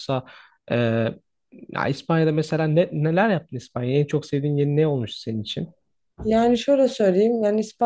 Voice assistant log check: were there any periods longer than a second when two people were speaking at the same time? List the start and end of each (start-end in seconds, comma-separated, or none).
none